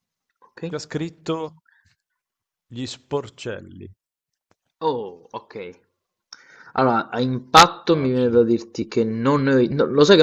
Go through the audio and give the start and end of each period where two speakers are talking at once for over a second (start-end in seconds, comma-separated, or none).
none